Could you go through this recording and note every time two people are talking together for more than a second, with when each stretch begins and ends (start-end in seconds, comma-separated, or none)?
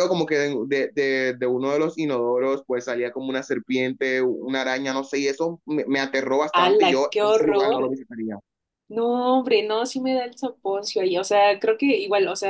6.5-7.9